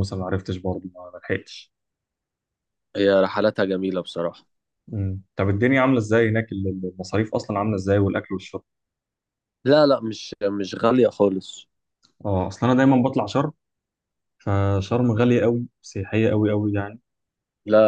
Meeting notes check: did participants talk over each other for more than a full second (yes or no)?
no